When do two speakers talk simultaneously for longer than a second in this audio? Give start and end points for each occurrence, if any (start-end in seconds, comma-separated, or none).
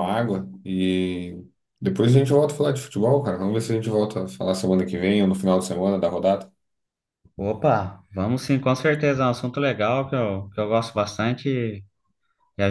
none